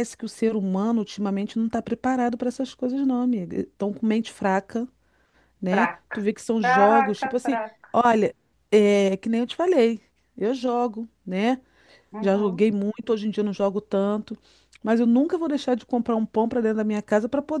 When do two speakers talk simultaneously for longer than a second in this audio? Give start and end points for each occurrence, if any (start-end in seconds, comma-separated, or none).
5.7-7.9